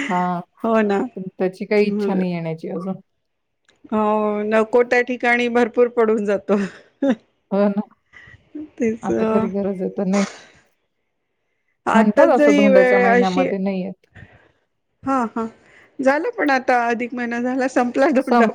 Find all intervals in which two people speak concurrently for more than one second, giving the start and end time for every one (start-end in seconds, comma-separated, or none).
11.9-13.4